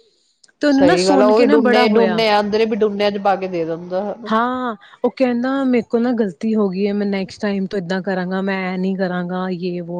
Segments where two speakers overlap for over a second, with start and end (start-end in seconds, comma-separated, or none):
0.8-2.2